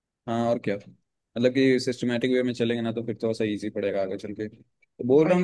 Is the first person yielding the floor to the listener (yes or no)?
no